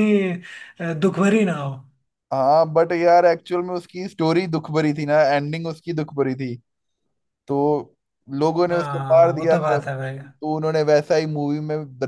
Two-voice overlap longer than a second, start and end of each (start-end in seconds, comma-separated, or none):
8.7-10.2